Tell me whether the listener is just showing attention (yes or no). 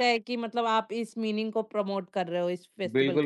no